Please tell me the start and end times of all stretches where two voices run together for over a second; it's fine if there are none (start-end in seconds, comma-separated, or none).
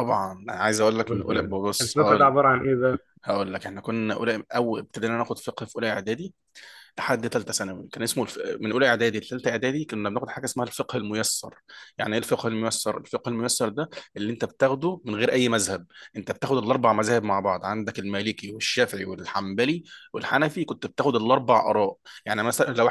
1.0-2.4